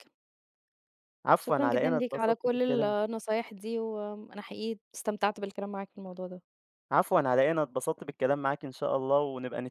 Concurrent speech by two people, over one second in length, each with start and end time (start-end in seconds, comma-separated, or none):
1.4-3.0